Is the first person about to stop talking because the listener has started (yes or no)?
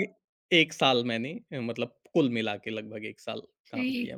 yes